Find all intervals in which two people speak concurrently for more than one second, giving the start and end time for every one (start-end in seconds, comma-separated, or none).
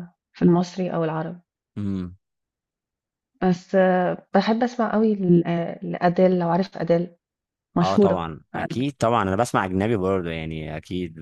none